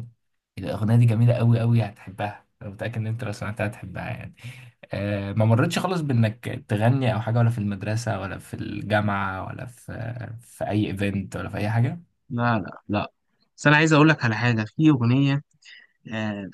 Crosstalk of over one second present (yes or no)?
no